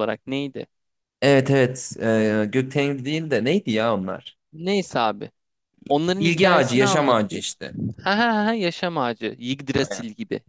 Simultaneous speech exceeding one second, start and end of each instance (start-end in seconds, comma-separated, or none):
6.2-7.4